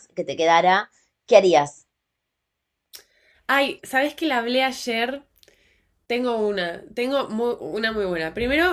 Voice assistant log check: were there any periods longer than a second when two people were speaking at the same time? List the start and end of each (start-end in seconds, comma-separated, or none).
none